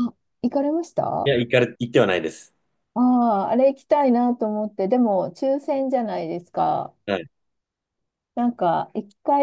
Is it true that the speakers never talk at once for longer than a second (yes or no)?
yes